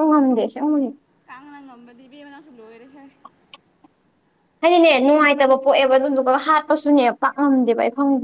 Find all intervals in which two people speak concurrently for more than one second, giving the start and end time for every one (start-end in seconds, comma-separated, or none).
none